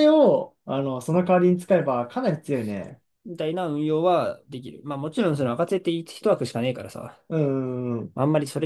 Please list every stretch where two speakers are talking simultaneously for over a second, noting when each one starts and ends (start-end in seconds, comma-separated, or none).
none